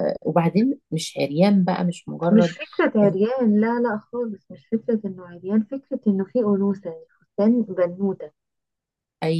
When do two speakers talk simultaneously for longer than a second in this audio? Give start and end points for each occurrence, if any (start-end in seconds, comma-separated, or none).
none